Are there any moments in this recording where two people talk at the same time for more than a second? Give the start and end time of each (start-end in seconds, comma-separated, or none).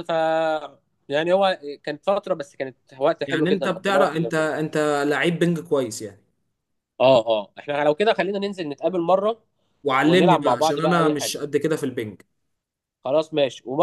3.3-4.5, 10.0-11.4